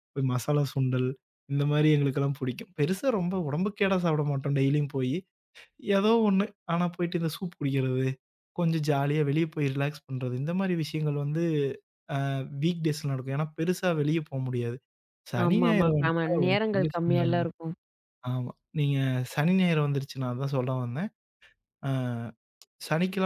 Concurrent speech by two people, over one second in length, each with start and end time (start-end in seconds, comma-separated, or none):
15.4-17.4